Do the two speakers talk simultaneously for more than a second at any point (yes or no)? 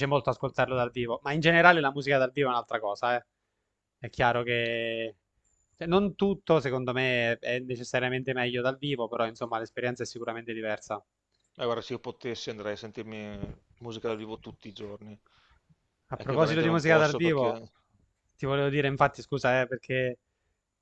yes